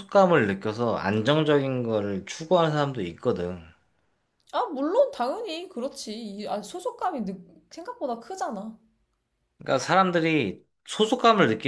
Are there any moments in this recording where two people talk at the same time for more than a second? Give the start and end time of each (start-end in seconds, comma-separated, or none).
none